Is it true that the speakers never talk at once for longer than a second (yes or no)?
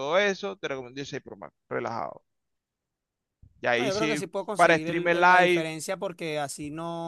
no